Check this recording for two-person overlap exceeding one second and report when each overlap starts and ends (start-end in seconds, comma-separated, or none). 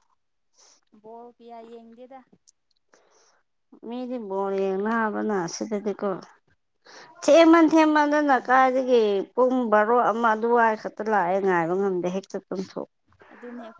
none